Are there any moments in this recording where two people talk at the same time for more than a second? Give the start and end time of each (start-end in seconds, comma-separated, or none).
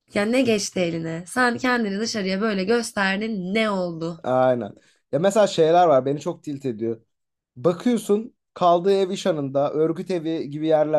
none